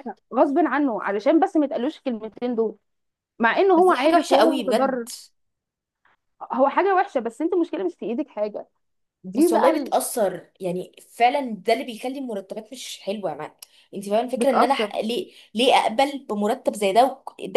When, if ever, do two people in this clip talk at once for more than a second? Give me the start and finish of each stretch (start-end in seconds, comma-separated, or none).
3.8-5.1